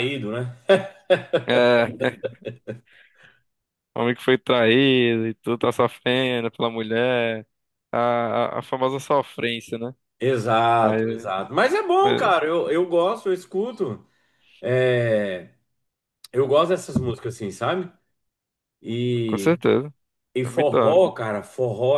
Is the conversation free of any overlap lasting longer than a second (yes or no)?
yes